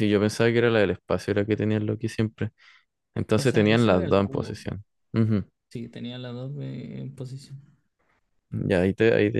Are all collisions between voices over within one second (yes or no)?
no